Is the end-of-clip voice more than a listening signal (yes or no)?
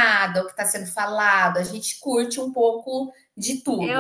yes